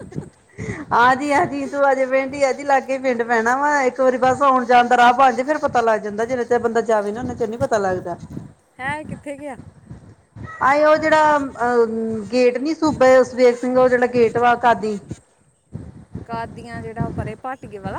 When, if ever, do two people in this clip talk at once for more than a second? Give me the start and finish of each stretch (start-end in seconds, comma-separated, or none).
none